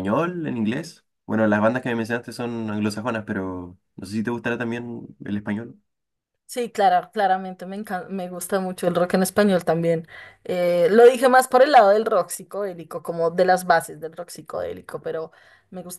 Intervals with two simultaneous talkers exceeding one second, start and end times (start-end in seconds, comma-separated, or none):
none